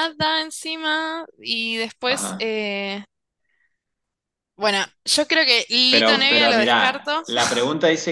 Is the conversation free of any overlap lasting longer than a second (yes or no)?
no